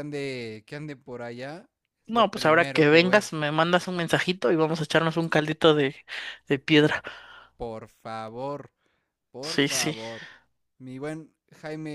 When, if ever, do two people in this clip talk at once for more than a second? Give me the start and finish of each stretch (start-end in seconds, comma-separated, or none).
2.0-3.2